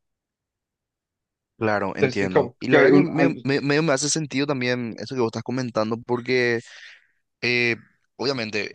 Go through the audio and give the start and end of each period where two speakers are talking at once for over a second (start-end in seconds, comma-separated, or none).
2.0-3.5